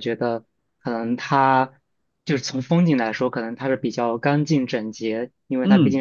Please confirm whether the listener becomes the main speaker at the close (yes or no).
no